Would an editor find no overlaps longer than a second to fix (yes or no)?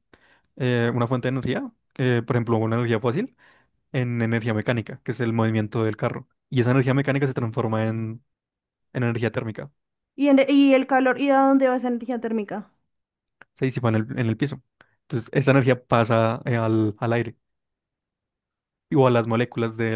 yes